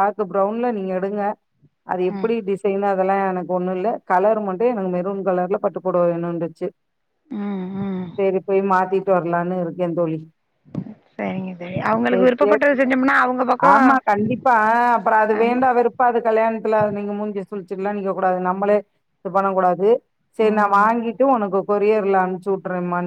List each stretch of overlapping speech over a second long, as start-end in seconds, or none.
none